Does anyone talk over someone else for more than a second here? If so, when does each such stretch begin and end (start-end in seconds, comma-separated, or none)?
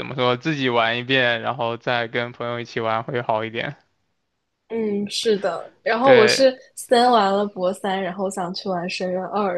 none